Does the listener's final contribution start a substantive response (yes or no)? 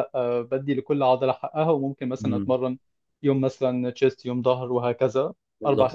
yes